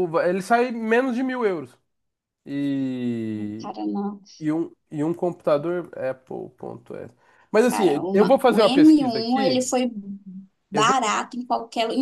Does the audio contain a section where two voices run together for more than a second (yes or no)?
yes